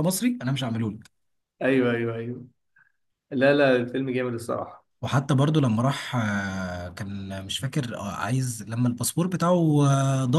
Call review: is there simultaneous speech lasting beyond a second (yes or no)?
no